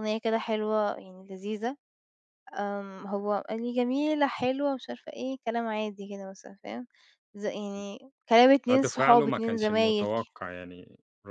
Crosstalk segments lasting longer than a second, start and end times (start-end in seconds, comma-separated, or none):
8.7-10.1